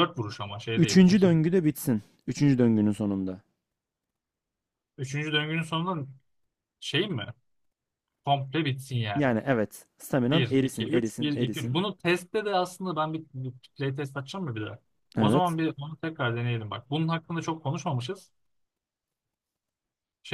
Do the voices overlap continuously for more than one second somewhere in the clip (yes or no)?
yes